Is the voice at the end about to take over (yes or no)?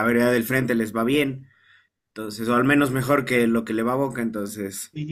yes